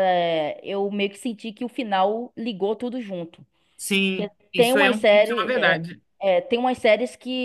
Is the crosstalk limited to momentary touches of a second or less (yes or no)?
no